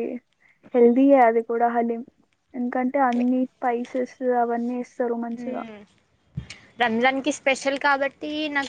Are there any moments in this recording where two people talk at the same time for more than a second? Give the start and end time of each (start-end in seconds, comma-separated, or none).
none